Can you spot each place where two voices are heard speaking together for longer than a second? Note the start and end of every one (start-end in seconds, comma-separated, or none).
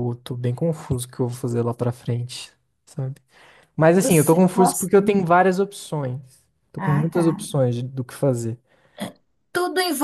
3.9-5.2